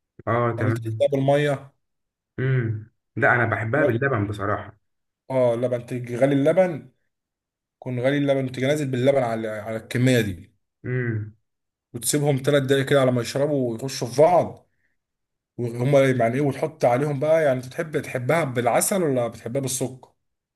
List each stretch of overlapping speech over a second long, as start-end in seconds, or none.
none